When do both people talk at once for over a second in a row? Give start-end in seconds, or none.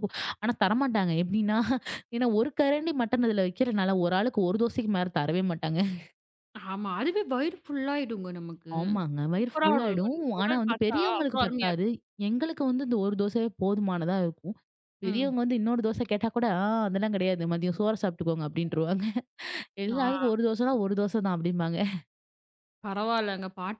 9.4-11.9